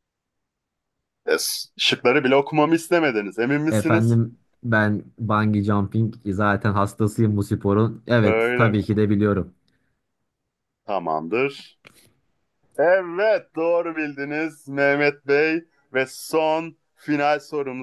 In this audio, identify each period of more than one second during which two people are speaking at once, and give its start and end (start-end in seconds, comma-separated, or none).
none